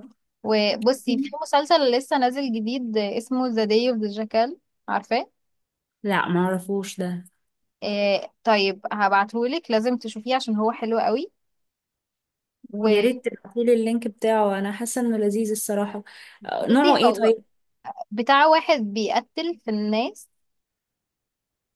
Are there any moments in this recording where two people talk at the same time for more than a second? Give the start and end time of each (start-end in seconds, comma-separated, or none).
none